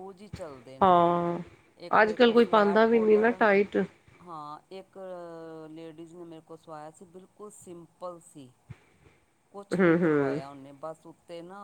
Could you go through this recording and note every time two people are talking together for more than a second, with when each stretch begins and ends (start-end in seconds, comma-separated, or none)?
2.0-3.4